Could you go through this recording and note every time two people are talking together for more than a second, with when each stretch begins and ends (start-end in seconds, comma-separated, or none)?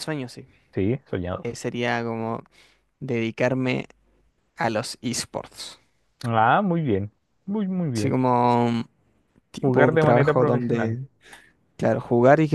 9.6-11.0